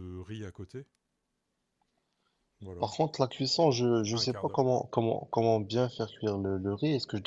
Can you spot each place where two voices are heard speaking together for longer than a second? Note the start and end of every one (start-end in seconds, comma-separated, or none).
none